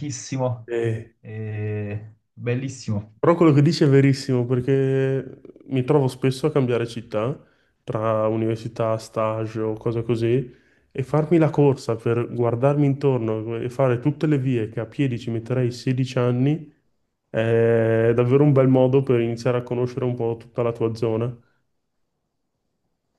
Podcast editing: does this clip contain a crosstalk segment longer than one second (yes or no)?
no